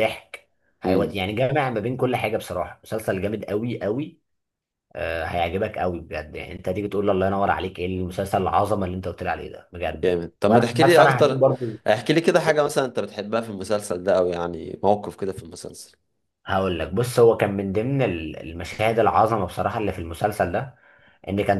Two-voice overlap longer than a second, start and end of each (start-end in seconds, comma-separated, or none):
10.0-11.5